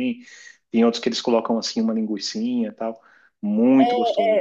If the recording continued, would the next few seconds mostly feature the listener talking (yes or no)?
yes